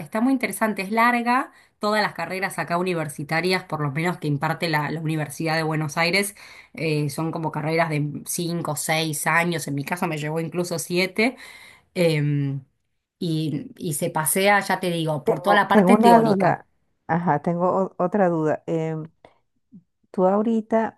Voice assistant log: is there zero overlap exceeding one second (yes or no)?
no